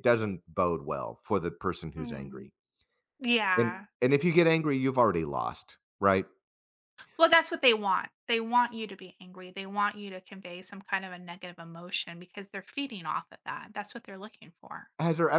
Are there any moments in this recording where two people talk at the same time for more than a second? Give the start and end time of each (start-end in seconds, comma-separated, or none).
none